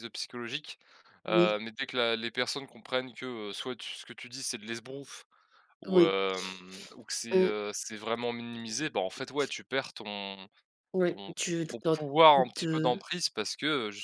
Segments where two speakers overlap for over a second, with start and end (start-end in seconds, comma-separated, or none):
11.1-13.0